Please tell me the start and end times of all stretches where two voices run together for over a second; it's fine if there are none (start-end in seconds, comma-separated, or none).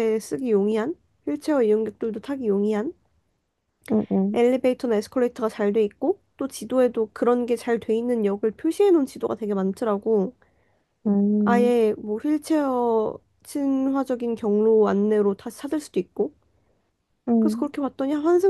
none